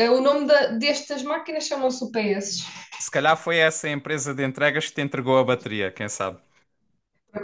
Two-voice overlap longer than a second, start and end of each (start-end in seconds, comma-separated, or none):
none